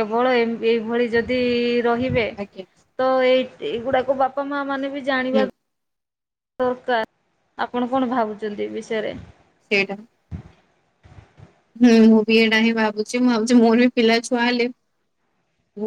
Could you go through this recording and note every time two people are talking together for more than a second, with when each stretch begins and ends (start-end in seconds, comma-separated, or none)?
none